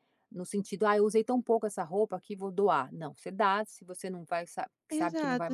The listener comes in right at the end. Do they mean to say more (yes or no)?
yes